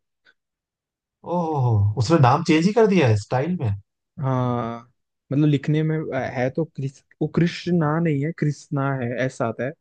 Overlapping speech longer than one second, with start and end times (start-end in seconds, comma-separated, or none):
none